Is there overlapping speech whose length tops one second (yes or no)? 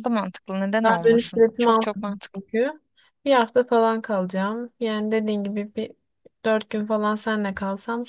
yes